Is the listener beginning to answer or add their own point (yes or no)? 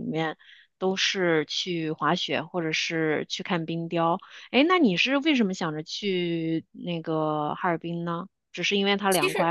yes